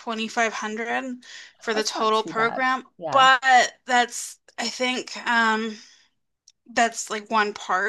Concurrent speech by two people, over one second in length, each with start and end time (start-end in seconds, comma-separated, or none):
1.7-3.3